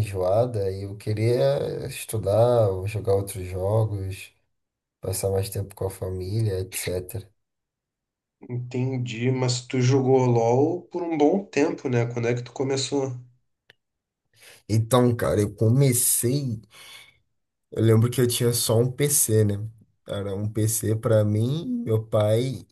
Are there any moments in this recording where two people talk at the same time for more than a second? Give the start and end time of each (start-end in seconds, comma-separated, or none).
none